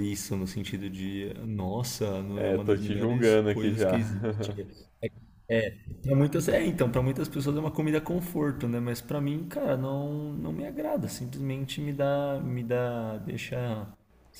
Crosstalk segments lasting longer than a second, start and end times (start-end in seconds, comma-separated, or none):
2.4-4.0